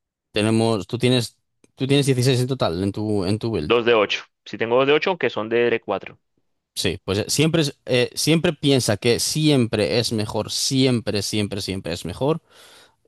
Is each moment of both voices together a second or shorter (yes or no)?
yes